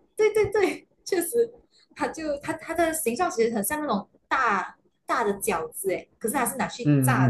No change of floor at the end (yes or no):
no